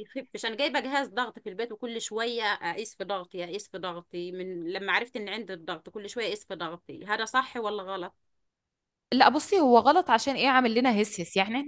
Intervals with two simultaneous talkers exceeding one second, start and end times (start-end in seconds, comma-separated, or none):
none